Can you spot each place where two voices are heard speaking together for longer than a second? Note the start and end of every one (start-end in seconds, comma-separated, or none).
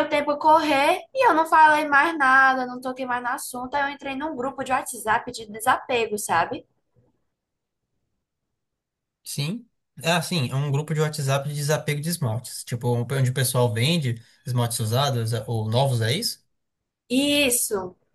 none